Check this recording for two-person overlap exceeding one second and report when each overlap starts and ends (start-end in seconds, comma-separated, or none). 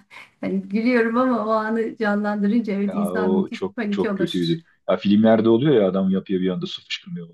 2.9-4.3